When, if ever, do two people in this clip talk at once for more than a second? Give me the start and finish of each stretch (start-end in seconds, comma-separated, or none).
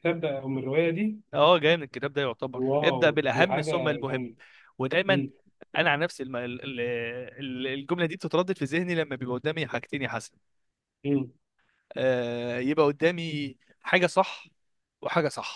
2.5-4.3